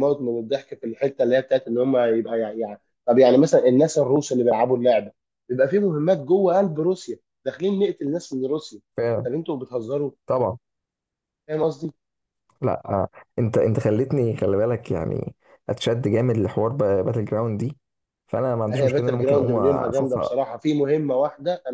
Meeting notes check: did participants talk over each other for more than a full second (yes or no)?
yes